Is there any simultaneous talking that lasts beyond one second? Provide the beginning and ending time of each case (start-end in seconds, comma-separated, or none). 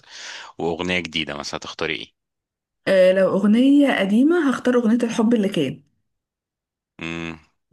none